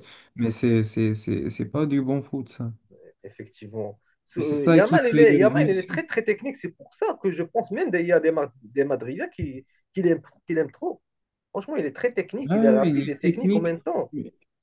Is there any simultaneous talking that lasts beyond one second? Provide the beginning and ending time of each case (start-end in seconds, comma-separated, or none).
4.4-6.0, 12.5-13.8